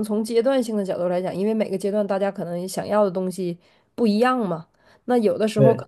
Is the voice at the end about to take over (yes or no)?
no